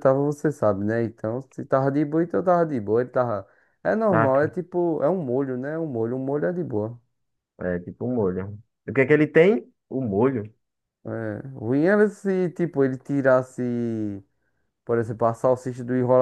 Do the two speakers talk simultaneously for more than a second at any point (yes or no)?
no